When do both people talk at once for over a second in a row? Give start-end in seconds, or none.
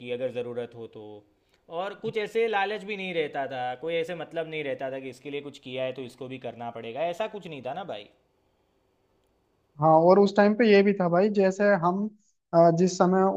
none